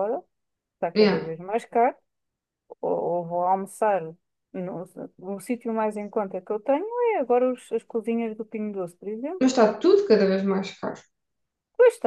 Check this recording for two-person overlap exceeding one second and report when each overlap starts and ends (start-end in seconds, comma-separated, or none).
none